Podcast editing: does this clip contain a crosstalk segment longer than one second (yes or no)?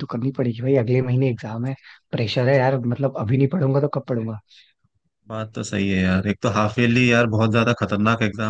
no